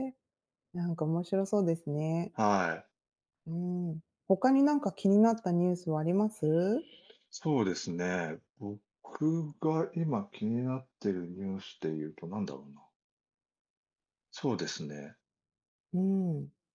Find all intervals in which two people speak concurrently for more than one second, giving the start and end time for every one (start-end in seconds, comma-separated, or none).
none